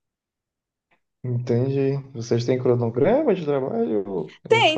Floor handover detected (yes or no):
yes